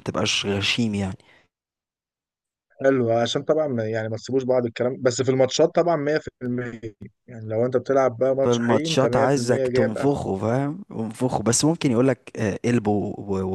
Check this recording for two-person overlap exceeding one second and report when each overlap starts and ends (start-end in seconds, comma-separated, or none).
8.4-10.2